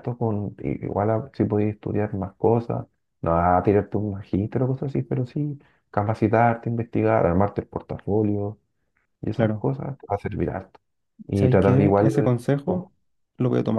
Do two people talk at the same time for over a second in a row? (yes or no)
yes